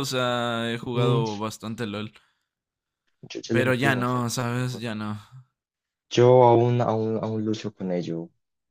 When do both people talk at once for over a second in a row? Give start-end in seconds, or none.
3.5-4.9